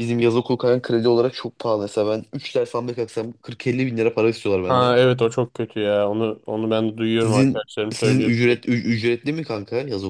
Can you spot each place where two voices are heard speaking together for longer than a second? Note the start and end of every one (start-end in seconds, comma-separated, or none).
7.2-8.7